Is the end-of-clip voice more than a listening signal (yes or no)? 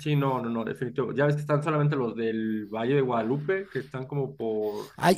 yes